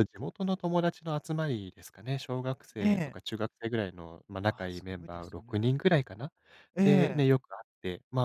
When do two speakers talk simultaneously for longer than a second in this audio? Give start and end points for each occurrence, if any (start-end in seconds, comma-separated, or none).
4.5-5.7